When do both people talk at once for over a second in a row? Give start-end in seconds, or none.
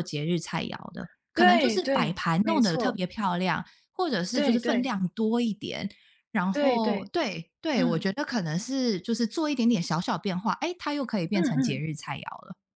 1.3-3.0